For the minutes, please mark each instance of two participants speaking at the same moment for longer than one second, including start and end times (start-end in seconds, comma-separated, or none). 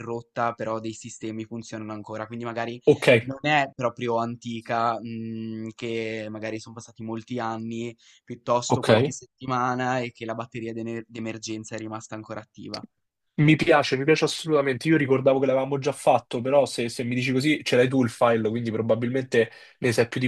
none